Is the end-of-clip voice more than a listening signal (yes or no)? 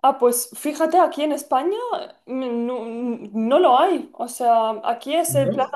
no